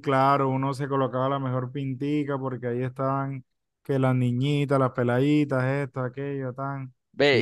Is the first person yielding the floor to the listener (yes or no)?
yes